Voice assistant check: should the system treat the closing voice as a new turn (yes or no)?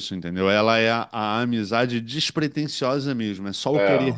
no